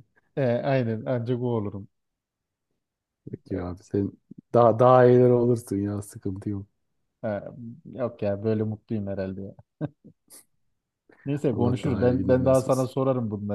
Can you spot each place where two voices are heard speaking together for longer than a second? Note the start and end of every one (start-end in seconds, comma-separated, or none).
11.5-12.9